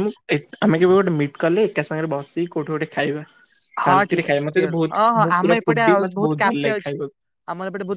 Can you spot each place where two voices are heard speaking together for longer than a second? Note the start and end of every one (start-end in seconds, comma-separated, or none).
3.9-7.0